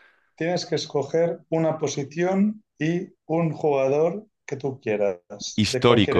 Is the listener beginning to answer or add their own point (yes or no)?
yes